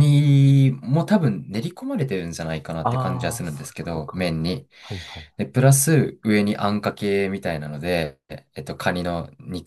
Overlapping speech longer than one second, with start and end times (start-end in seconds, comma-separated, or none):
2.8-4.2